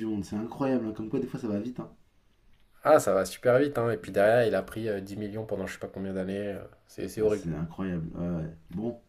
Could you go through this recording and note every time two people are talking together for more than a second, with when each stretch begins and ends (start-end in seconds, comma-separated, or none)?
none